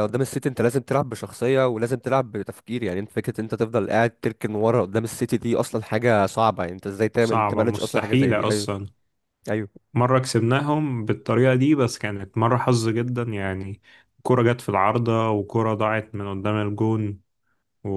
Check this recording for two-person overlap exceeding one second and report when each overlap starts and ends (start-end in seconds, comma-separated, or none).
7.2-8.7